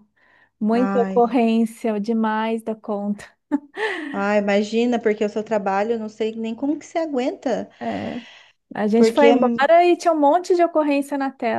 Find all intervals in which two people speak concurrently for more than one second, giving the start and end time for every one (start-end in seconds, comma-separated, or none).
none